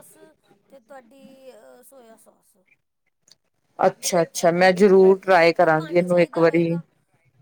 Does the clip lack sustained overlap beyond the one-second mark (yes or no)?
no